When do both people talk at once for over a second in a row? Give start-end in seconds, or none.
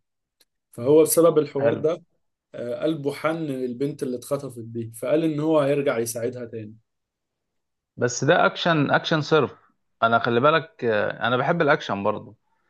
none